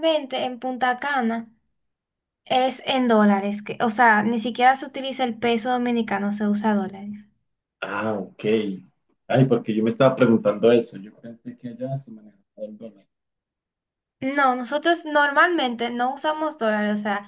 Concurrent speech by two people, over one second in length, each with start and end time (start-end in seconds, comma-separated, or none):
none